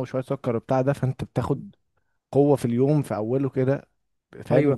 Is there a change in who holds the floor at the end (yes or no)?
yes